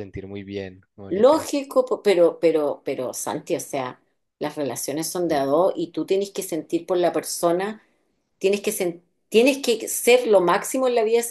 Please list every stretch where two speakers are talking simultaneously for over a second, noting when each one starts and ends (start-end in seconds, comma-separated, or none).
none